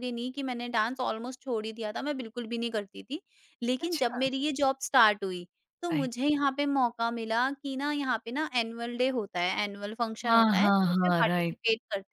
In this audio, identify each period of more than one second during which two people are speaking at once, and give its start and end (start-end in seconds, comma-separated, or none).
10.3-11.6